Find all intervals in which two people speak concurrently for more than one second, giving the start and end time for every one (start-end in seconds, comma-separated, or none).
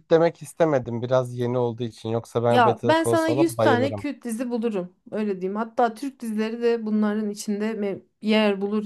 2.5-4.1